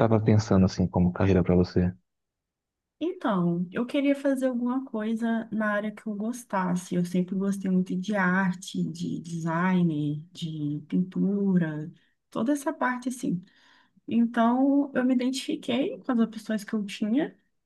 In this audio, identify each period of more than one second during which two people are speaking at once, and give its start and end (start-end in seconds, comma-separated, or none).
none